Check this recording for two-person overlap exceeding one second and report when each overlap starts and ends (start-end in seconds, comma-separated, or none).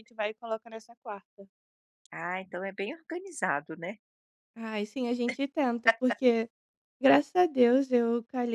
none